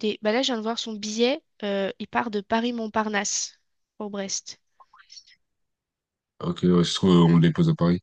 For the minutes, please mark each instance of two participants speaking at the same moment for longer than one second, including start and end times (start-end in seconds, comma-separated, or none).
none